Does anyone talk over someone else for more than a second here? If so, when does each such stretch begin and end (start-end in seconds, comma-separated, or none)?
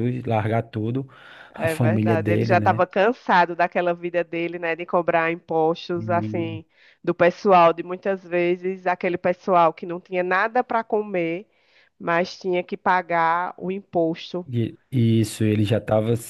1.6-2.8